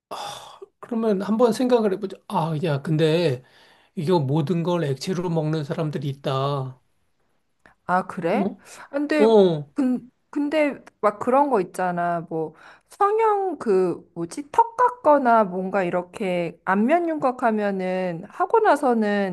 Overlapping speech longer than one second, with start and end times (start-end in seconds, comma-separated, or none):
none